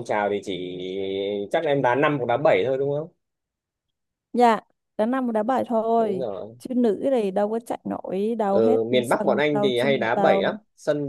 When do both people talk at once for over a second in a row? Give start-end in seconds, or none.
8.5-10.5